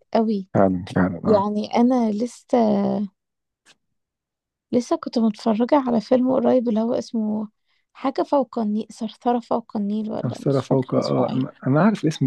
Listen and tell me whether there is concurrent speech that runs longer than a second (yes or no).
yes